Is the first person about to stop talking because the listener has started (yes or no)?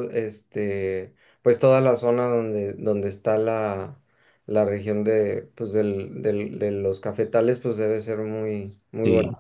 no